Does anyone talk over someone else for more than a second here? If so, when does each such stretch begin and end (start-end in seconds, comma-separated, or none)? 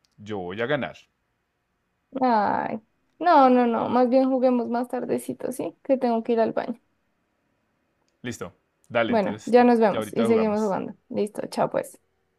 9.1-10.8